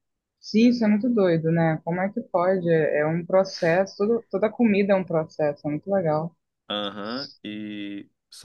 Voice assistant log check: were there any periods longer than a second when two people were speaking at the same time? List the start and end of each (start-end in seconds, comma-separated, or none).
none